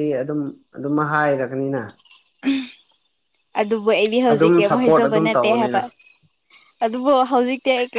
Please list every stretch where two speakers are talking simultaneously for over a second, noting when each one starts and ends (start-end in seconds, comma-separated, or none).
4.3-5.8